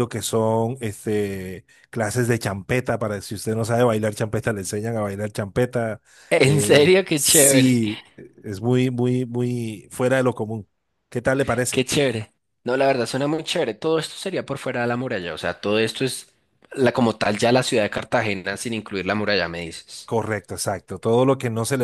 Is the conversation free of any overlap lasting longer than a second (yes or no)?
no